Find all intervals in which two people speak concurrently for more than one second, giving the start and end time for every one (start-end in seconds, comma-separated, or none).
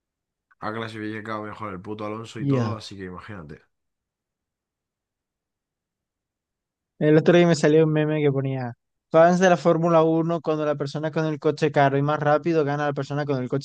none